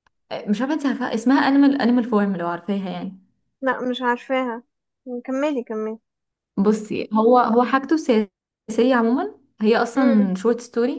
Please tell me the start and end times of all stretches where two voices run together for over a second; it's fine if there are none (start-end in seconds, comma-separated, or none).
none